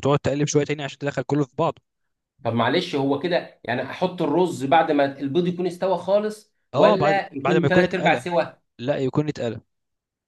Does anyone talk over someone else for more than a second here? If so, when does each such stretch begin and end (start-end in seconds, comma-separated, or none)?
6.7-8.3